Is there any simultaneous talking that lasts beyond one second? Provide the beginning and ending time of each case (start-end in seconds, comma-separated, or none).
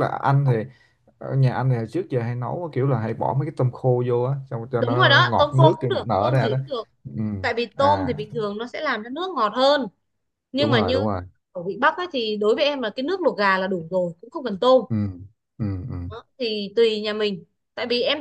4.8-6.6